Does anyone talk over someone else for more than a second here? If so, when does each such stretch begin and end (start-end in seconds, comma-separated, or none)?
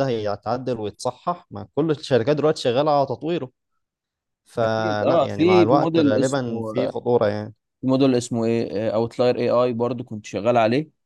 4.6-7.0